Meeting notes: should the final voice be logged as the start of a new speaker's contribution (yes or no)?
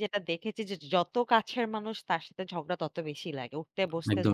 yes